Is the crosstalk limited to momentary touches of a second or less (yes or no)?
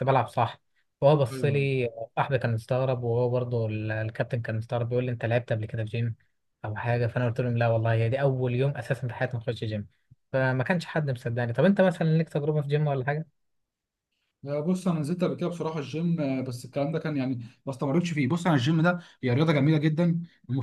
yes